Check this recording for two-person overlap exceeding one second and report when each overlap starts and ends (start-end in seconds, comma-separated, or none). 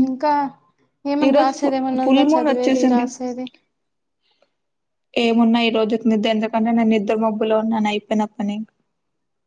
1.3-3.0